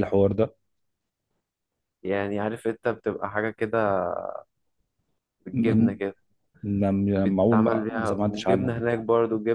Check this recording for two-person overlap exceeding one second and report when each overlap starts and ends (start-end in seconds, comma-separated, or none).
7.1-8.7